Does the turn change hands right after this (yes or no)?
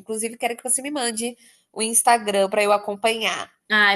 yes